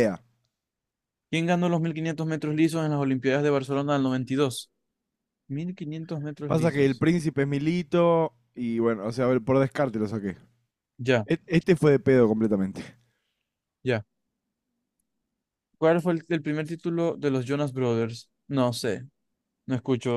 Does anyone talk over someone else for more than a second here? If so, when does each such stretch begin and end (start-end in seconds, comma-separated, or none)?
none